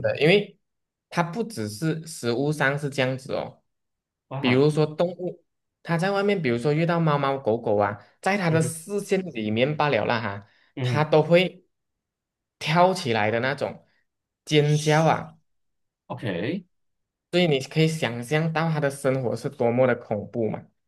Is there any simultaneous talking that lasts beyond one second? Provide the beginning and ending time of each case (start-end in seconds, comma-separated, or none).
none